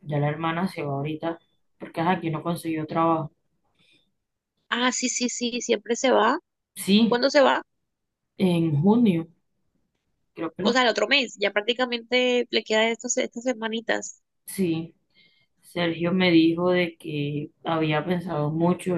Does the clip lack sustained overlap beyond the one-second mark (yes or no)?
yes